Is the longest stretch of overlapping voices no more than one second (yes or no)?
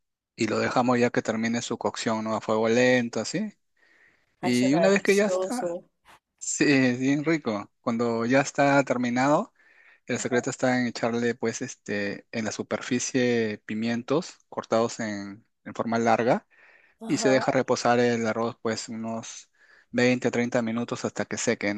no